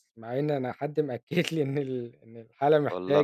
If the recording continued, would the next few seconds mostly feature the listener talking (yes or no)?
no